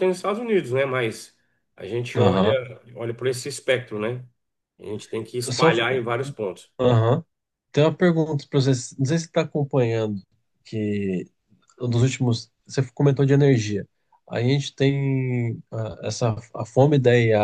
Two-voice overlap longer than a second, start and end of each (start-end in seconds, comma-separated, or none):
none